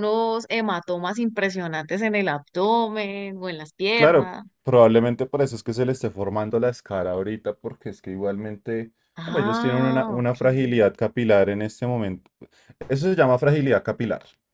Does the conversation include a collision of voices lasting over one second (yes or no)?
yes